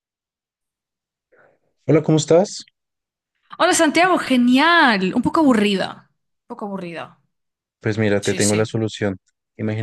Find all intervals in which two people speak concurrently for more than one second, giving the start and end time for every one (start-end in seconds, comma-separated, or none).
none